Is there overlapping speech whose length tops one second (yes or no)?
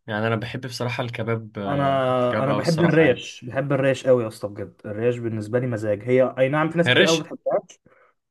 yes